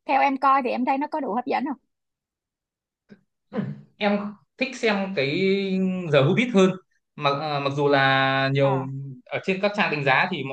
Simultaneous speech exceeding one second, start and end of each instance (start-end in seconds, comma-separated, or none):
none